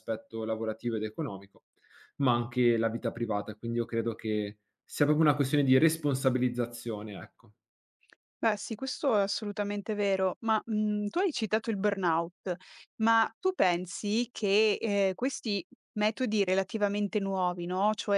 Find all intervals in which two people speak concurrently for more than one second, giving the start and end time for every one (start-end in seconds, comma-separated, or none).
none